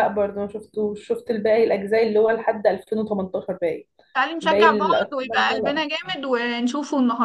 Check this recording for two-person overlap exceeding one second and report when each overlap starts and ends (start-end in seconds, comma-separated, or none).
4.4-5.8